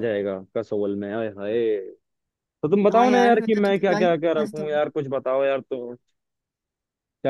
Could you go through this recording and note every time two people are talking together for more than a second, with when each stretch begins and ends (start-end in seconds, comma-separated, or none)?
2.9-4.6